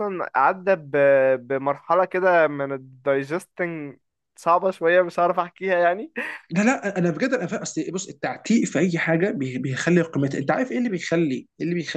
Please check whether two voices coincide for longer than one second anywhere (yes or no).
no